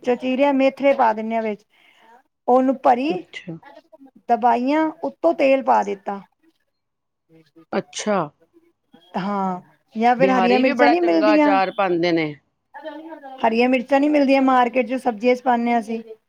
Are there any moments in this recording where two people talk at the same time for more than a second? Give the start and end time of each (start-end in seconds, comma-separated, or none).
10.2-11.6